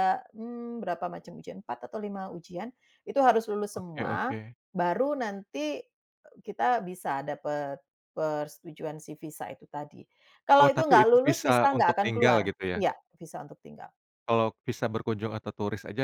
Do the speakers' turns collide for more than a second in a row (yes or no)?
yes